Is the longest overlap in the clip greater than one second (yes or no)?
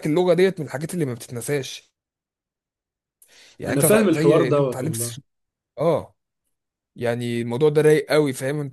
yes